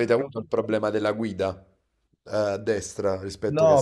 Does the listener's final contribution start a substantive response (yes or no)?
yes